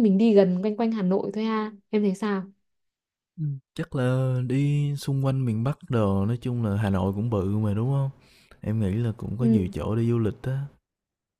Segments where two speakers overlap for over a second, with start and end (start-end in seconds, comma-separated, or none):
none